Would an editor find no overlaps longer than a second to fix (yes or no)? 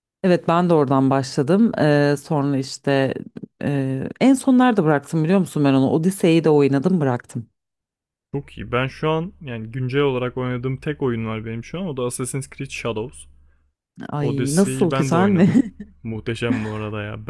no